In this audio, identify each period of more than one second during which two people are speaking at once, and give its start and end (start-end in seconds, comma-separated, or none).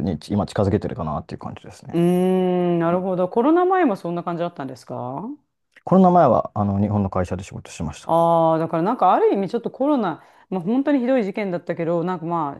none